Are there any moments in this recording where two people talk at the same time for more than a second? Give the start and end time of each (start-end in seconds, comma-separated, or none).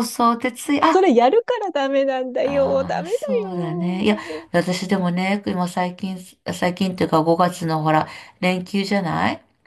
2.4-4.5